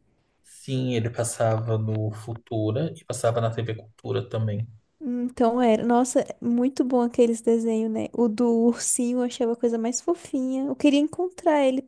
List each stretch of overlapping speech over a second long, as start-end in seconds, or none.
none